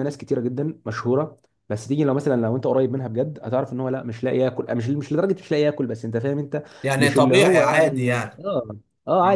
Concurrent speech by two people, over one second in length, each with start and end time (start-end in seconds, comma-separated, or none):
7.0-8.4